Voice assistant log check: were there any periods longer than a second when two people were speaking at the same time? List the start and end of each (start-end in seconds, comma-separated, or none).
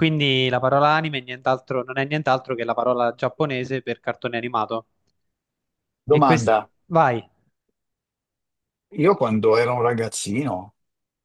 none